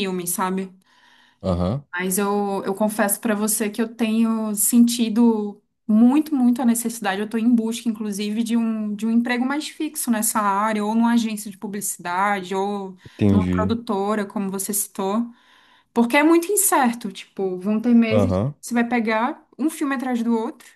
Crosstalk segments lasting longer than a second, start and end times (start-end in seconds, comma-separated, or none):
none